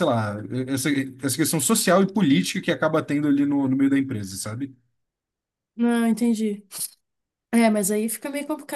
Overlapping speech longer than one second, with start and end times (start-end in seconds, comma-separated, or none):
none